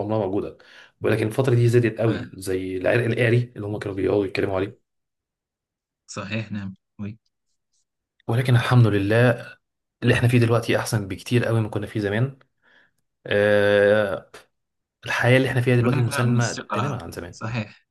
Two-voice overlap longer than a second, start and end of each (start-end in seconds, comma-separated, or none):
15.8-17.4